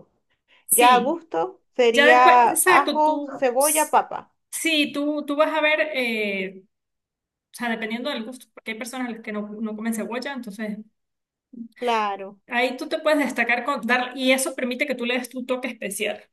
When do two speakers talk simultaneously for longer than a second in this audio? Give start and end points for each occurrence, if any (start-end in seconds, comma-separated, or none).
1.9-4.0